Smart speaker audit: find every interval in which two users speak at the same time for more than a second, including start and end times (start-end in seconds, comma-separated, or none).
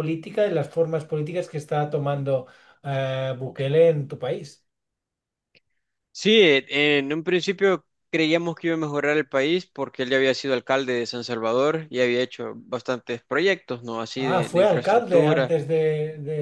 14.2-15.6